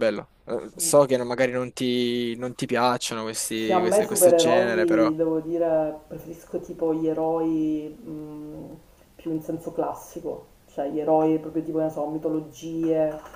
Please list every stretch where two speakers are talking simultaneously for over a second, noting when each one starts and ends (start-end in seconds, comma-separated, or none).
3.5-5.1